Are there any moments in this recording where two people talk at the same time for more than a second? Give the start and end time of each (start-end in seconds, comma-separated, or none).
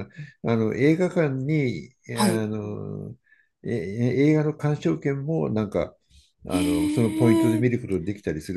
6.5-7.8